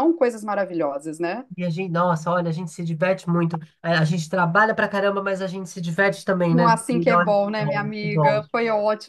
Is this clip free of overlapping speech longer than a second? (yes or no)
no